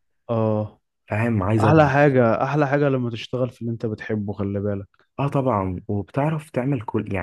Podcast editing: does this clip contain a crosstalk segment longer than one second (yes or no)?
no